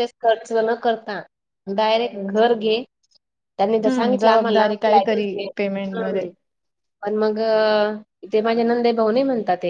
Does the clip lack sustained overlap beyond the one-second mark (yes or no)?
no